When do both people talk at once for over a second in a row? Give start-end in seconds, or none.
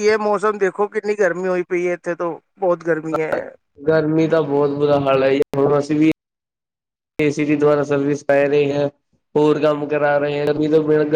none